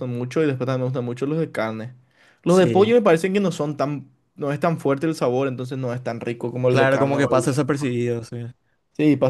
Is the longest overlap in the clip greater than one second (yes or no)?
yes